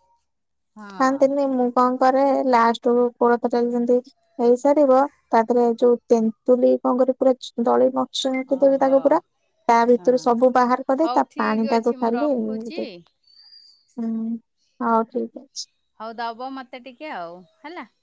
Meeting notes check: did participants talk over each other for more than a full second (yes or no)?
yes